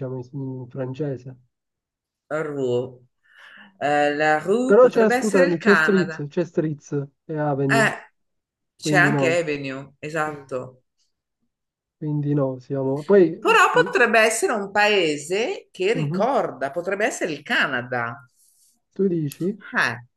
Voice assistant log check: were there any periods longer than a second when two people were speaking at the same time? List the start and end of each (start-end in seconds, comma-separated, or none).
4.6-6.3